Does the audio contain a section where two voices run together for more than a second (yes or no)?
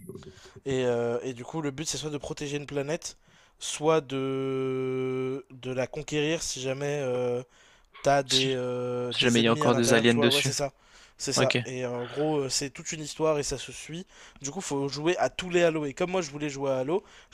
yes